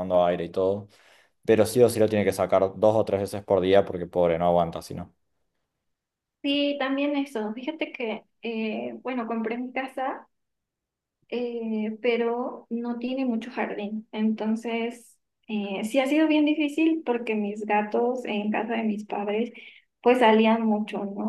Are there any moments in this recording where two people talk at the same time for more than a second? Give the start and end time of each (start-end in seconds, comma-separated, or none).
none